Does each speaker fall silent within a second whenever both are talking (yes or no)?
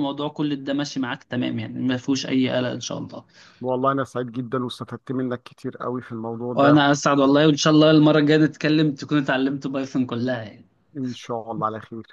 yes